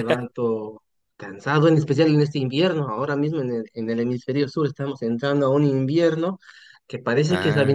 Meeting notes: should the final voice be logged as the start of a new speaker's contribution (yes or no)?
no